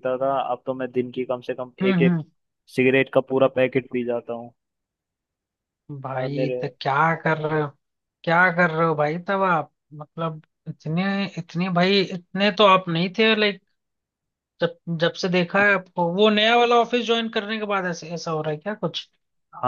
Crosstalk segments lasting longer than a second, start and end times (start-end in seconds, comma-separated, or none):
none